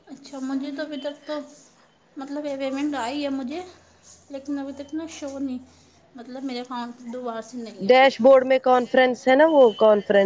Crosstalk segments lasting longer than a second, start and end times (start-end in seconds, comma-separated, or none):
none